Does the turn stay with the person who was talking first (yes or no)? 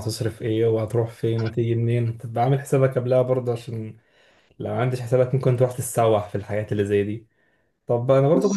yes